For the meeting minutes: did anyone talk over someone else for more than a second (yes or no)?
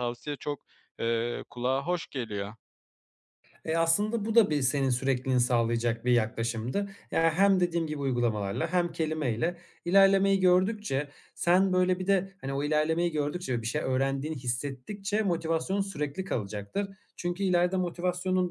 no